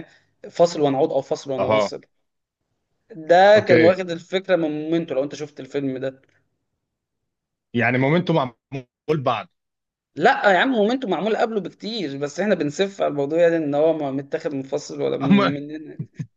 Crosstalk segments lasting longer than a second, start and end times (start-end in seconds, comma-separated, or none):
none